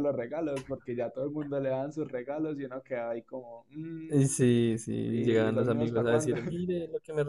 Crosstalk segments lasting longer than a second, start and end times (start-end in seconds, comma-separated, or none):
5.1-6.4